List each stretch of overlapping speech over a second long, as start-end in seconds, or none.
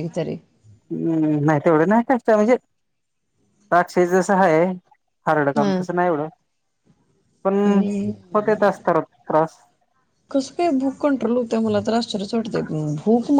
none